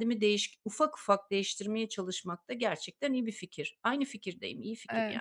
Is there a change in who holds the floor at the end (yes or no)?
yes